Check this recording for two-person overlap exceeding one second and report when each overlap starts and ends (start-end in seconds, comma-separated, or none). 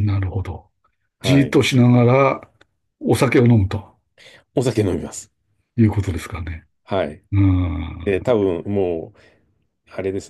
none